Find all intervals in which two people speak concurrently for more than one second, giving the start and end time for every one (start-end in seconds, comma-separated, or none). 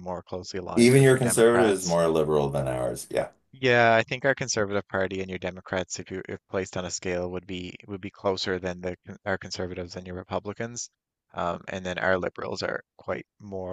0.8-2.0